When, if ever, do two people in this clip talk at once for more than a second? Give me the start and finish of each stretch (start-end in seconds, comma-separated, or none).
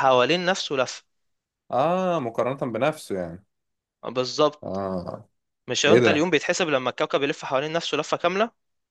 none